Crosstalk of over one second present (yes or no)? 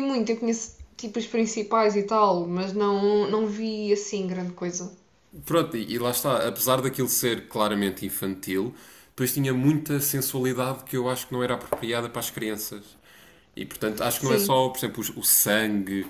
no